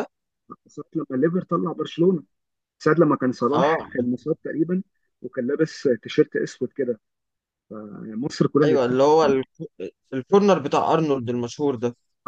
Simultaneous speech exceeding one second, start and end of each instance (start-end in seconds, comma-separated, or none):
none